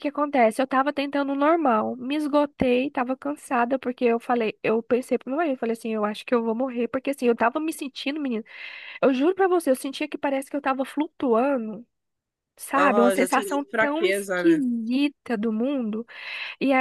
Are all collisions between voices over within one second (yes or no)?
no